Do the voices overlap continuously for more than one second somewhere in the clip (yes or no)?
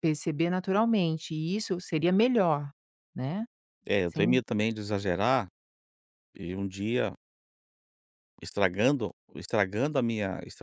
no